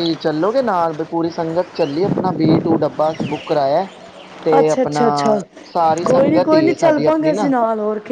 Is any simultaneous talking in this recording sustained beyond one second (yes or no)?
yes